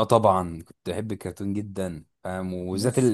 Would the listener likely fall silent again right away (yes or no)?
yes